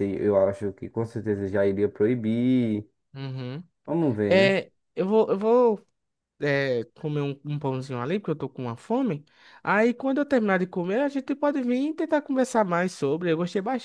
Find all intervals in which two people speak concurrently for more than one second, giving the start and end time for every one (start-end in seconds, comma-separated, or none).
none